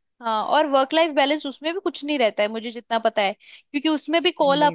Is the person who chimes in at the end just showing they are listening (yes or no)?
yes